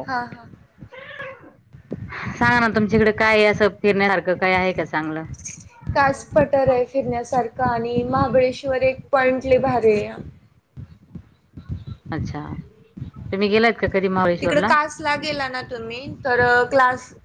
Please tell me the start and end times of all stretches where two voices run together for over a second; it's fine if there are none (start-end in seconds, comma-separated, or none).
none